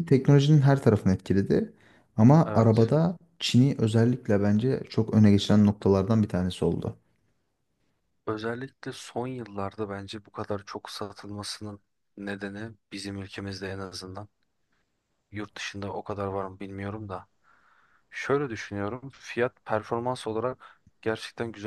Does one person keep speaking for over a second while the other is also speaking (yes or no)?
no